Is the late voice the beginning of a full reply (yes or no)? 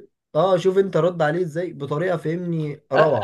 yes